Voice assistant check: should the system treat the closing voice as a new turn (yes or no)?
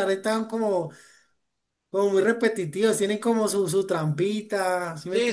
yes